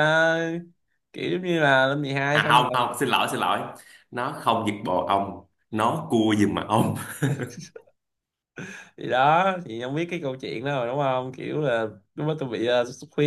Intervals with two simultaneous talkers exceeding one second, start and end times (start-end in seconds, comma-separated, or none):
none